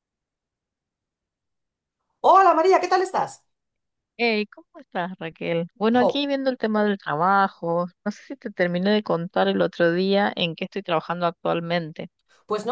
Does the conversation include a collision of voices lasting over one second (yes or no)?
no